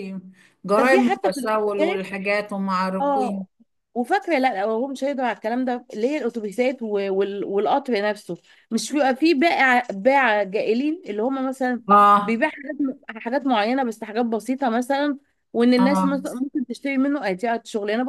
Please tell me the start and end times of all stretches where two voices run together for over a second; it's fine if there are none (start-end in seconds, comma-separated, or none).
0.8-2.1